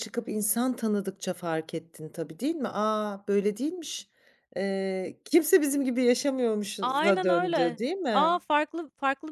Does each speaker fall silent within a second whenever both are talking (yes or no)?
no